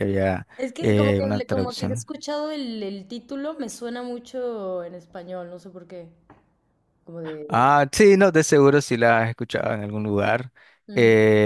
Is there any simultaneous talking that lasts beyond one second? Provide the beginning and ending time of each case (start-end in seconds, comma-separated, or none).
0.6-2.1